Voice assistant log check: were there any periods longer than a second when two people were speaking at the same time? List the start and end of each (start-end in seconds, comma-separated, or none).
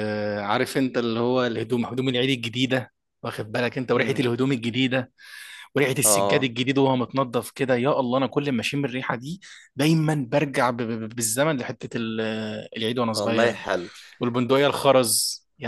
none